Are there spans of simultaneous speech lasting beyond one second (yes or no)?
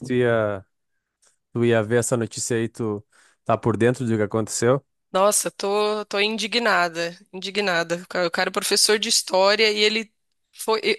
no